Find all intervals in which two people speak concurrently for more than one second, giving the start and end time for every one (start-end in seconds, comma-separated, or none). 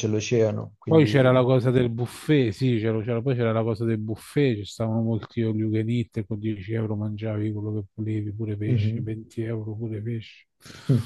none